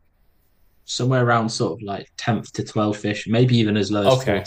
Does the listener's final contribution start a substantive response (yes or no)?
no